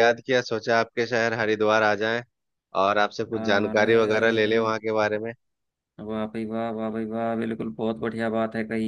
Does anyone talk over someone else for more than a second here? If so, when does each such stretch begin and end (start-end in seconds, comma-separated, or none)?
3.3-4.6